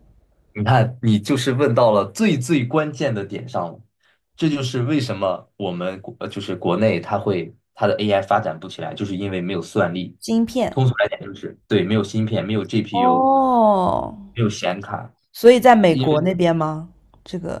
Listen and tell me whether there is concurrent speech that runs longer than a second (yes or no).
no